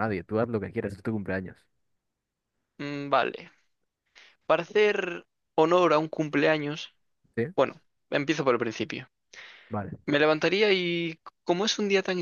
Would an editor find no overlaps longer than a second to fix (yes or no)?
yes